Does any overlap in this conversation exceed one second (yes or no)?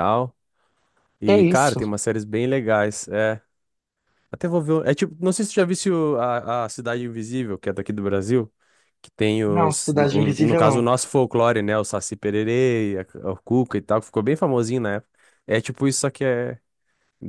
yes